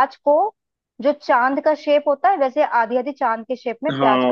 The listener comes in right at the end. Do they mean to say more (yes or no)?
yes